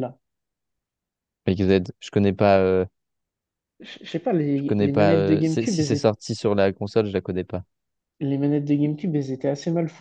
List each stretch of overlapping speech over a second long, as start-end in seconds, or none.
4.5-6.1